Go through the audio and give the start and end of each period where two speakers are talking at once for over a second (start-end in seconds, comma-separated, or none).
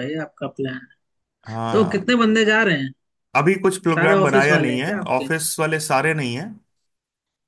3.9-5.3